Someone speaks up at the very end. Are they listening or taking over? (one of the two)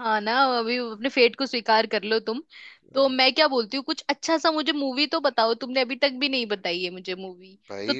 listening